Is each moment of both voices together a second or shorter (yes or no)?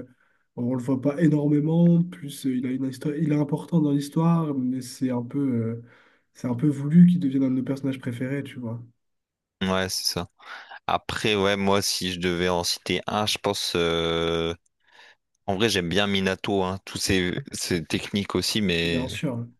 yes